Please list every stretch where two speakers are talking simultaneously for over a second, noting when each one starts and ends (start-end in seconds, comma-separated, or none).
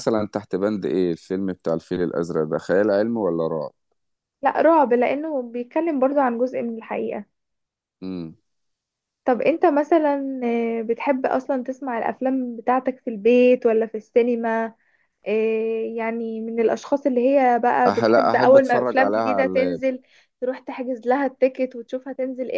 17.9-19.8